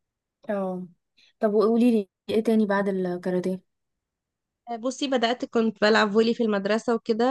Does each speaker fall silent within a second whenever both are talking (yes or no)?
yes